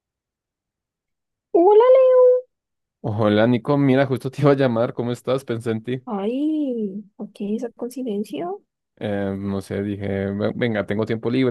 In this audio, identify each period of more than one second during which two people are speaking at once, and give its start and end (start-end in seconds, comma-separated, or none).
none